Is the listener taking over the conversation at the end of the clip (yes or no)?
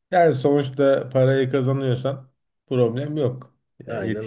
no